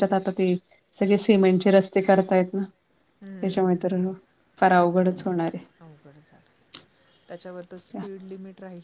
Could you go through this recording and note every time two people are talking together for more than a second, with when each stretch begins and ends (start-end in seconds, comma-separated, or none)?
none